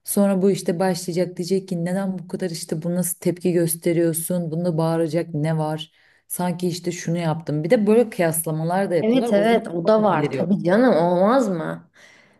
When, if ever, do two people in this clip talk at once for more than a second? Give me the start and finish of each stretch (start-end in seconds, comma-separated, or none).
9.0-10.5